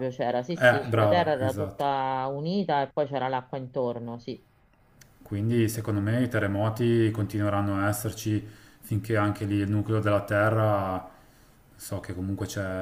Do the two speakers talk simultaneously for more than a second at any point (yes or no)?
yes